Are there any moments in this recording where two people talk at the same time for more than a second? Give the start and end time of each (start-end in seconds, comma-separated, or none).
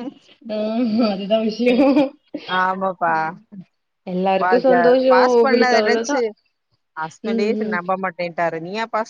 4.4-6.2